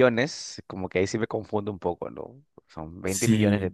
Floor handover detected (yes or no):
no